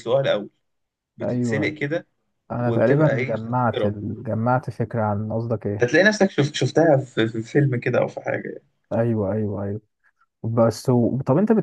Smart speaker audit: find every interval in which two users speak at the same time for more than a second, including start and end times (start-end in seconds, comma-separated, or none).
2.6-3.9